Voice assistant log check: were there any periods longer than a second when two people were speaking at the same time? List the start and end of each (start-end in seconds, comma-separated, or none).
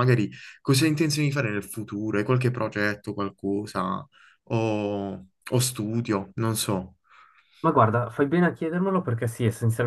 none